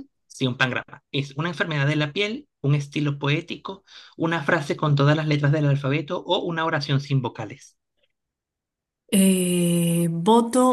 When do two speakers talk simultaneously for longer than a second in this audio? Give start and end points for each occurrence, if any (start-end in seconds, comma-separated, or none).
none